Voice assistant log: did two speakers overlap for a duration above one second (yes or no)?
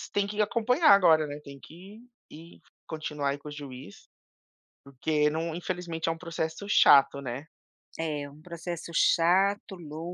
no